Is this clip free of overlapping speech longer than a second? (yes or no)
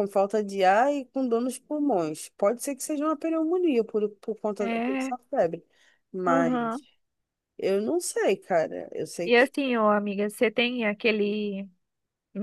yes